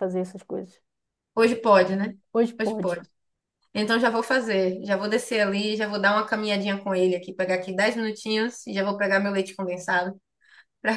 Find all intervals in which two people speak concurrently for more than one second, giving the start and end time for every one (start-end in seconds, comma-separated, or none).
none